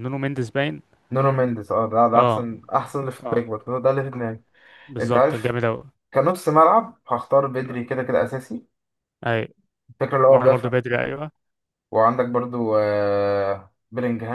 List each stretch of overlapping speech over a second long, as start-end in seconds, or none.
none